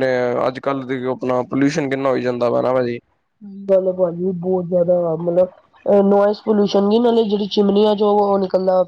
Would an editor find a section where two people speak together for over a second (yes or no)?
no